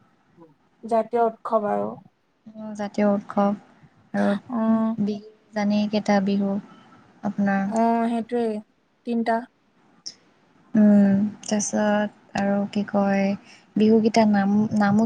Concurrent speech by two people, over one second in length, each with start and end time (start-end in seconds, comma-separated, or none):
none